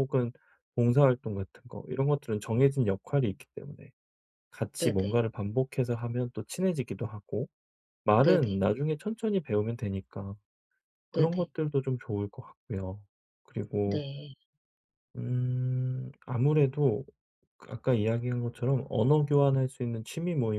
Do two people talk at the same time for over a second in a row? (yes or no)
no